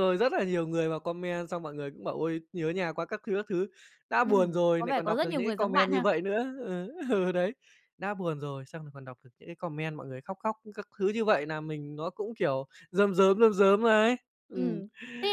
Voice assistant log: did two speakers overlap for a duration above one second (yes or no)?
yes